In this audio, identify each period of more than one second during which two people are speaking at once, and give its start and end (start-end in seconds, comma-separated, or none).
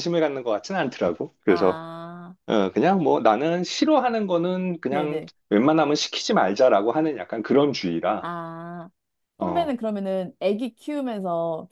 none